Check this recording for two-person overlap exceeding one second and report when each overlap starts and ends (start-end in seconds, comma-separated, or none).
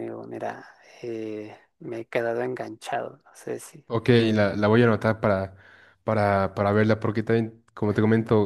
none